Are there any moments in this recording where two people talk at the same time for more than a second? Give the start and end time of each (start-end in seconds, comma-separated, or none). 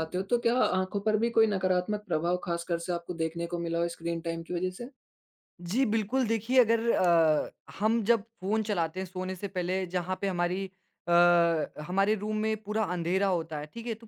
none